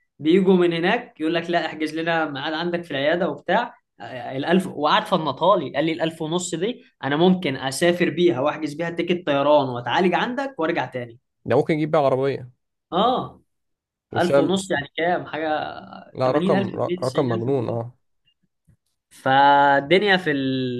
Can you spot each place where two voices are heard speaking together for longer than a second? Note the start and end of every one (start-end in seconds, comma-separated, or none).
16.2-17.8